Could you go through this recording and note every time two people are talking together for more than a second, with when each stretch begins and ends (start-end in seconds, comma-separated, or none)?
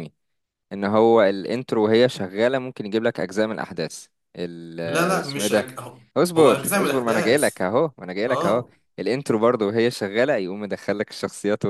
6.4-7.6